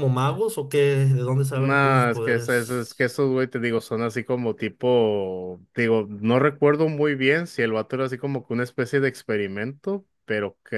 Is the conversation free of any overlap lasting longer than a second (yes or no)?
no